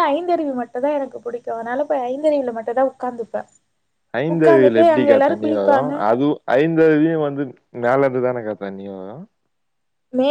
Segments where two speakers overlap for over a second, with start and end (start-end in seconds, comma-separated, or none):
4.3-5.9